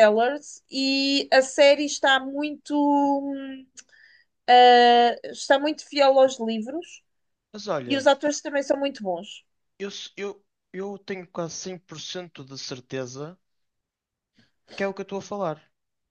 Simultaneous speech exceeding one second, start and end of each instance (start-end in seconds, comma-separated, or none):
none